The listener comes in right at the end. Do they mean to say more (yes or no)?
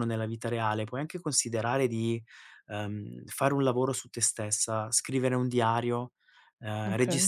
no